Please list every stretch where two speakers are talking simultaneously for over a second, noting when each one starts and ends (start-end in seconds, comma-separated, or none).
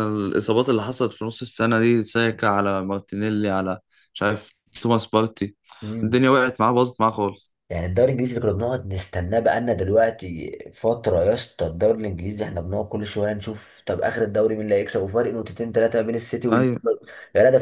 none